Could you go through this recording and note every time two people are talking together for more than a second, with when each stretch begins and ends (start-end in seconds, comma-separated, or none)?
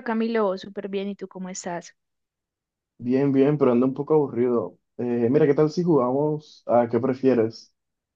none